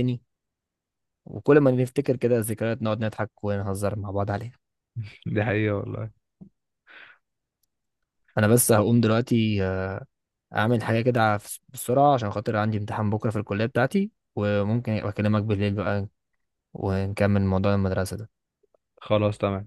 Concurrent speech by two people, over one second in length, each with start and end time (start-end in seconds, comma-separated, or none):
none